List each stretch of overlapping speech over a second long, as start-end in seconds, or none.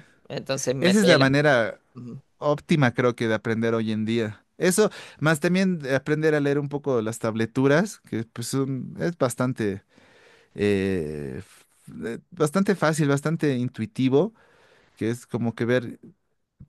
none